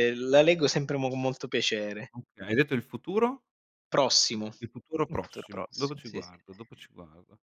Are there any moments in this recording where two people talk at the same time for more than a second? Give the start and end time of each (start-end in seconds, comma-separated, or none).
5.1-6.3